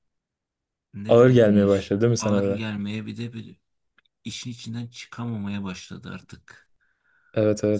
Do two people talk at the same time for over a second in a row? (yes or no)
yes